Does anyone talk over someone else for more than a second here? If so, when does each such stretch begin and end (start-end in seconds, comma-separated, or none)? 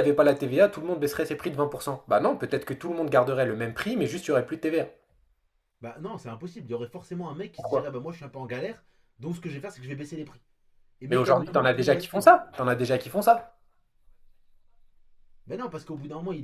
11.1-12.3